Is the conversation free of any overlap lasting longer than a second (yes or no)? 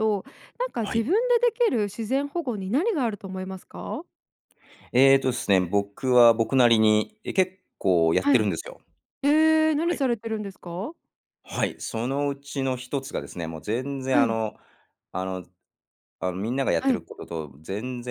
yes